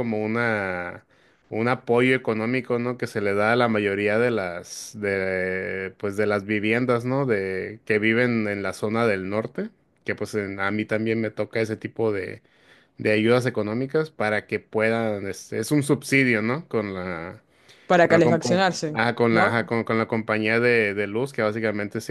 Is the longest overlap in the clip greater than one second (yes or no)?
yes